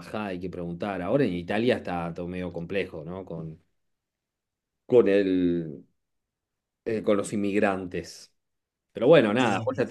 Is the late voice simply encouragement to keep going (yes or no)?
yes